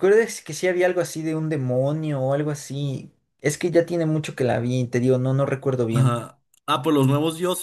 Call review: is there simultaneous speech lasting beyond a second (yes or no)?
no